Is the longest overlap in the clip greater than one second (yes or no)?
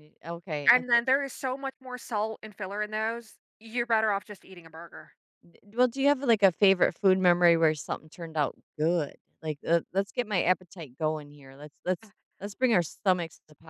no